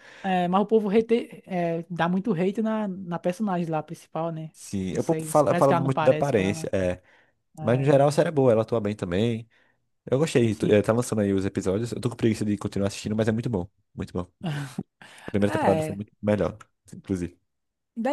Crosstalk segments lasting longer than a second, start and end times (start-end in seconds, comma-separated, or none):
4.9-6.7